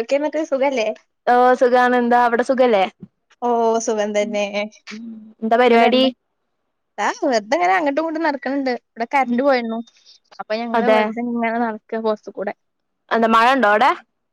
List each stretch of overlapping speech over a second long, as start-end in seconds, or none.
none